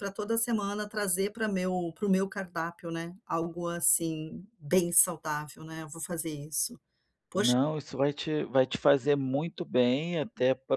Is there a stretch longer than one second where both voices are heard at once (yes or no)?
no